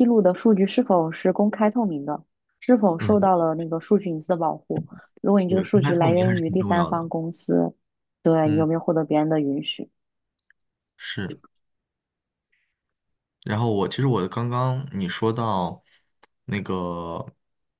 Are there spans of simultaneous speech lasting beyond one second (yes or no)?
yes